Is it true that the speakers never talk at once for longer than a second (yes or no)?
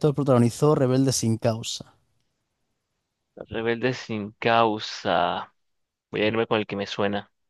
yes